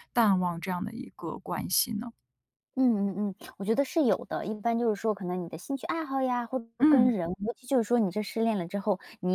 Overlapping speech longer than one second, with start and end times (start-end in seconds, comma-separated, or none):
none